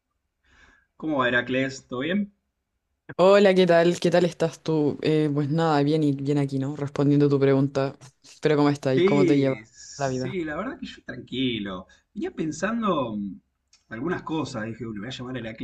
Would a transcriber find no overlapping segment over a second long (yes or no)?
no